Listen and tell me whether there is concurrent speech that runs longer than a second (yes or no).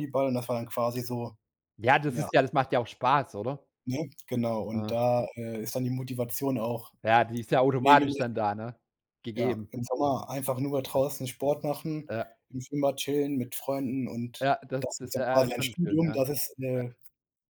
yes